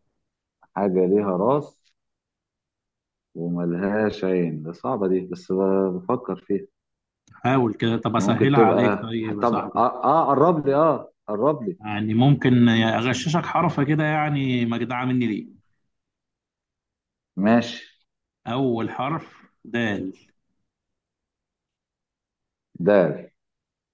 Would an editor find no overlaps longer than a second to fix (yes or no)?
no